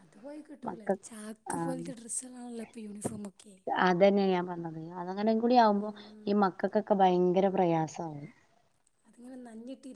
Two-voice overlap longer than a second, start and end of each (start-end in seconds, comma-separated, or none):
none